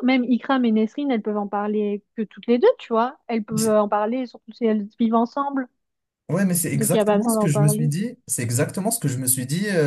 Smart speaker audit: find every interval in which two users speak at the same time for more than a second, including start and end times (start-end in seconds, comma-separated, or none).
6.7-7.9